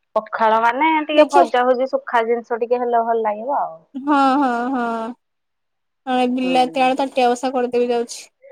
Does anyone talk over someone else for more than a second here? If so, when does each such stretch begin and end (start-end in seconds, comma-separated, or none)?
none